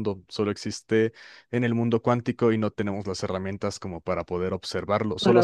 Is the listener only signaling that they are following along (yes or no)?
yes